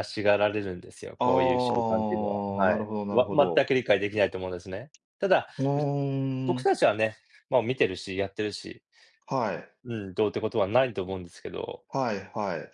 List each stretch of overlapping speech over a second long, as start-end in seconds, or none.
1.2-3.7